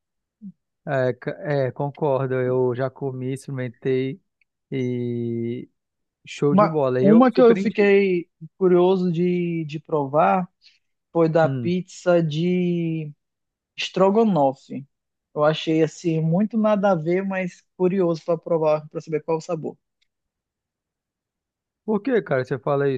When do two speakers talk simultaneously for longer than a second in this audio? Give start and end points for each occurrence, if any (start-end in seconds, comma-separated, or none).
6.5-7.9